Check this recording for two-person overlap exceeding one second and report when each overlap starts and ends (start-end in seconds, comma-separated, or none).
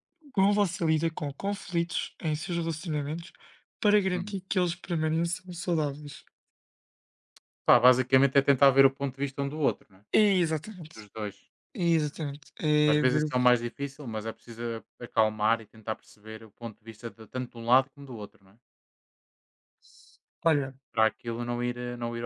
none